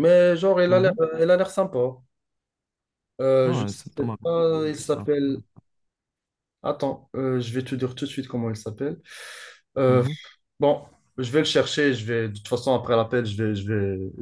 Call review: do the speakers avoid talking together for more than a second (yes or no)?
no